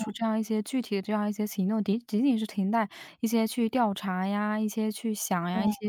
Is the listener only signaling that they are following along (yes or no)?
yes